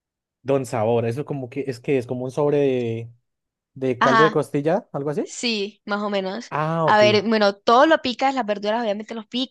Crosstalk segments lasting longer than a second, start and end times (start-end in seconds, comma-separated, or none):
none